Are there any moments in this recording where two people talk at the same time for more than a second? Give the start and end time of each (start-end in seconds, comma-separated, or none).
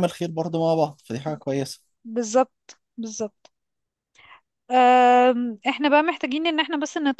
none